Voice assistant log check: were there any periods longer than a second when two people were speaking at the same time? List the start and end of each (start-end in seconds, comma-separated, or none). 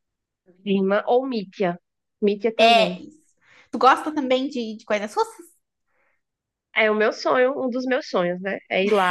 none